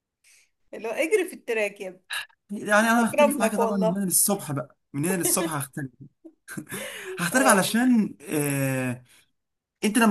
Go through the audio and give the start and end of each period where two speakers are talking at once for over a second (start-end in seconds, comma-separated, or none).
2.8-4.0